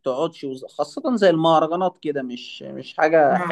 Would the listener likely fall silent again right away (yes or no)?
no